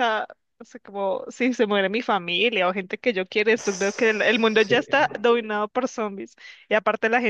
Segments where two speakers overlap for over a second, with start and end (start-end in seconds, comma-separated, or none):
3.5-5.1